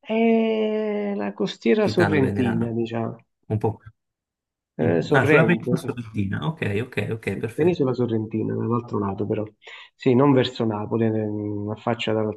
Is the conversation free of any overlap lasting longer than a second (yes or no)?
no